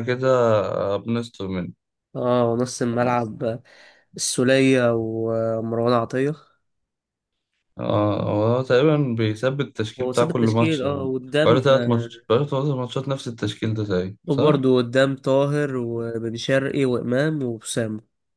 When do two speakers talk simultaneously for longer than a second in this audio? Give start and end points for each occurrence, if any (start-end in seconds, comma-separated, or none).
10.0-12.1